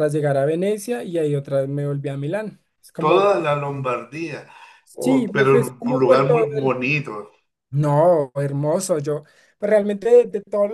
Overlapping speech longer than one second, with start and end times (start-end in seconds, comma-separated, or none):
5.0-6.8